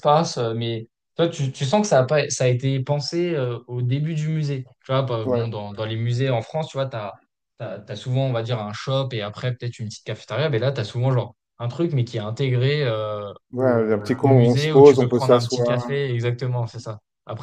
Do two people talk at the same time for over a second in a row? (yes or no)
yes